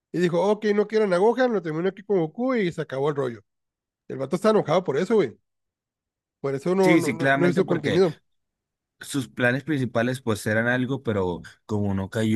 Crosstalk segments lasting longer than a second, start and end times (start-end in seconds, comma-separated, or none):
6.8-8.0